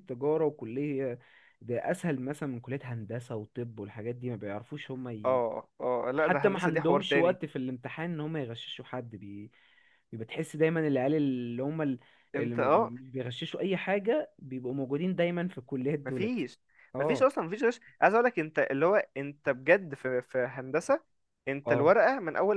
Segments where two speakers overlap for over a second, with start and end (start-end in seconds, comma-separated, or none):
6.2-7.4